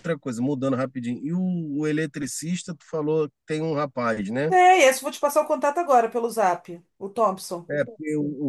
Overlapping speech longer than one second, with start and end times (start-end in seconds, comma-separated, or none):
none